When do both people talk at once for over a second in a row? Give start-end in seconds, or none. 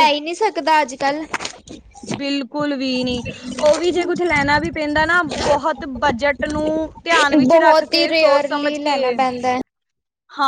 7.5-9.0